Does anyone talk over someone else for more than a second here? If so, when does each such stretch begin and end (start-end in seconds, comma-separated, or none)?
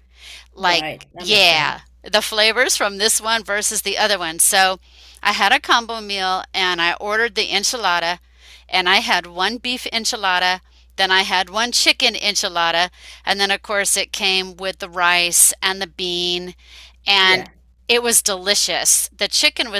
0.6-1.9